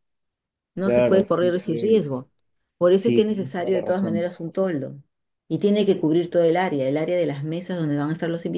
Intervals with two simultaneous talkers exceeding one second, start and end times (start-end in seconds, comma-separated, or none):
0.8-2.3, 2.9-4.3